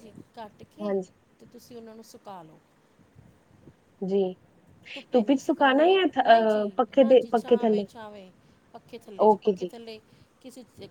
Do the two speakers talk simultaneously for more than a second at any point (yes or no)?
yes